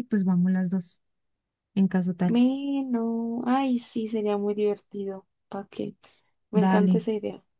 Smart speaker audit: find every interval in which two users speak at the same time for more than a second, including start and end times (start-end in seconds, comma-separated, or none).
none